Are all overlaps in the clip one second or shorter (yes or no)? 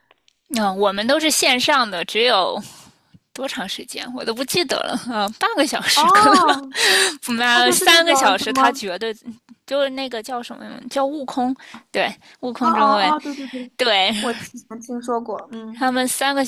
no